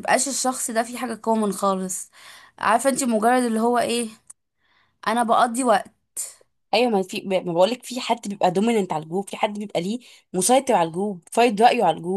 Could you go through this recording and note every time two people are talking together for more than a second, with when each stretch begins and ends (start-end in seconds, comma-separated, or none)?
none